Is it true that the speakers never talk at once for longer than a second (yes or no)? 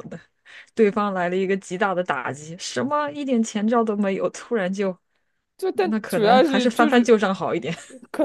no